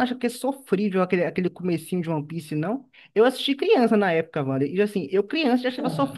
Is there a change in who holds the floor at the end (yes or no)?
no